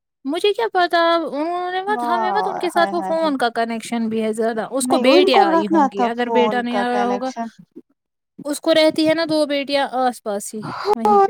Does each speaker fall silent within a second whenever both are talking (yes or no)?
no